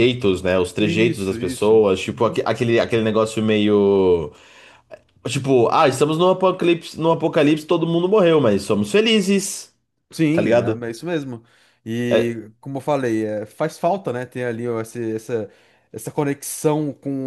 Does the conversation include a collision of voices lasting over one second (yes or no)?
yes